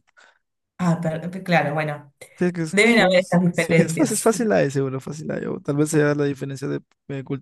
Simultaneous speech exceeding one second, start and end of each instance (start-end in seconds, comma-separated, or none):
2.7-4.3